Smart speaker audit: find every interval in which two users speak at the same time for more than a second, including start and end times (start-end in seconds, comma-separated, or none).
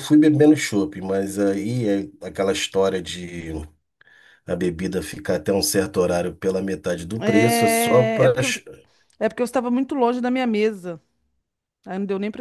7.2-8.6